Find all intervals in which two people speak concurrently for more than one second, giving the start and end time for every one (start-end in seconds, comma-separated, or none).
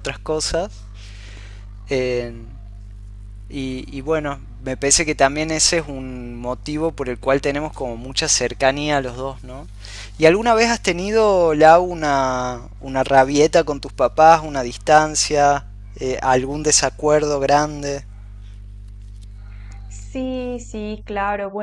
none